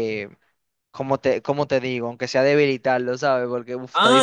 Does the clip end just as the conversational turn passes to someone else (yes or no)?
yes